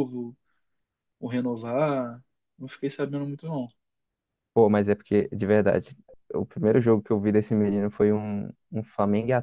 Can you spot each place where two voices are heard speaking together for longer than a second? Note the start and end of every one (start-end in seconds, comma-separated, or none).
none